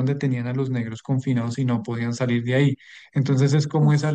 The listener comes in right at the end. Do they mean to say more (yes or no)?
no